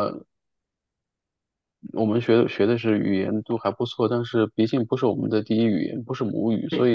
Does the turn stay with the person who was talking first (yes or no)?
yes